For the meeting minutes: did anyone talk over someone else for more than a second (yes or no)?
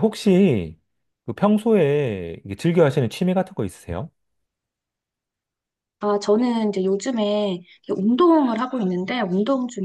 no